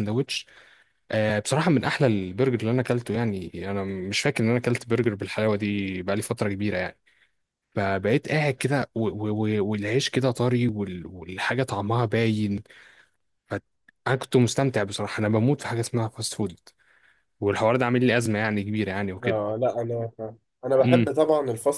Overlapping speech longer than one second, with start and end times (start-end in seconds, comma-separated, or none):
none